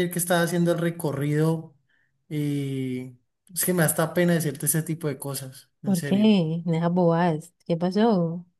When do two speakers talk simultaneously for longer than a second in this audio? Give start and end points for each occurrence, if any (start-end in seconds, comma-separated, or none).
none